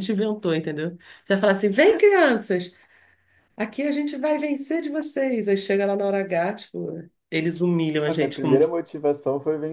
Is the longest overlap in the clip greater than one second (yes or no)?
no